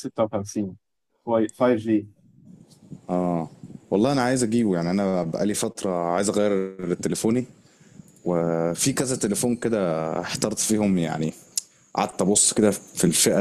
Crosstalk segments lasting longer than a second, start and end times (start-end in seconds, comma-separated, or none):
none